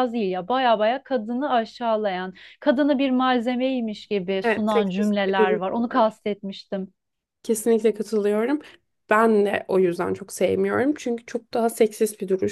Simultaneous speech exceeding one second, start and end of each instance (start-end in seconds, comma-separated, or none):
4.4-6.2